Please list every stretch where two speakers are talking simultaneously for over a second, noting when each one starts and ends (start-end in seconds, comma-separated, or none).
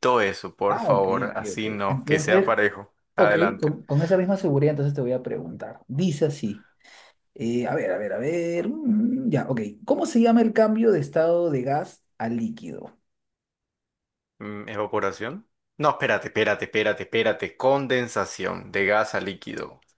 0.7-2.5